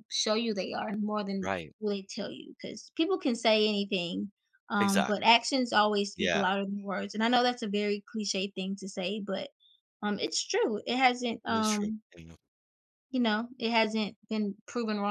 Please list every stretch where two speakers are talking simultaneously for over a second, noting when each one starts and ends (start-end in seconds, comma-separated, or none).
none